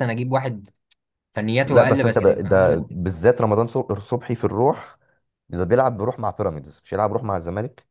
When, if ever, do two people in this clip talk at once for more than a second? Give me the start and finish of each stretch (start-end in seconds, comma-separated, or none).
1.6-2.9